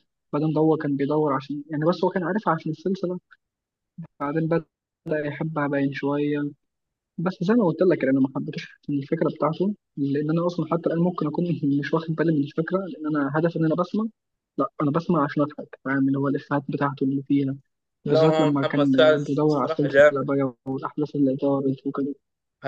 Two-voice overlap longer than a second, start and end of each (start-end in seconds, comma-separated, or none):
18.1-20.3